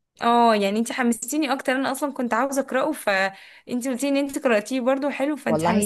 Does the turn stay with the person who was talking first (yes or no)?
no